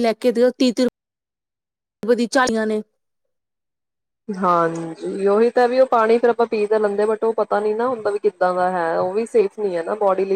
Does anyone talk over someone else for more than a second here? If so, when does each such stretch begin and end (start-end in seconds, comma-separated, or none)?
none